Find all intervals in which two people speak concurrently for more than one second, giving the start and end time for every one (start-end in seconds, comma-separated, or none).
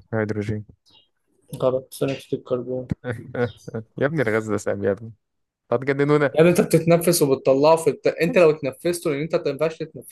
none